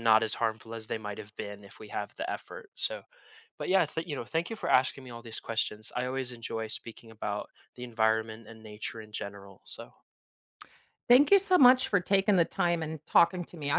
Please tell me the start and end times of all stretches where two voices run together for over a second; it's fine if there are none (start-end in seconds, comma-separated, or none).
none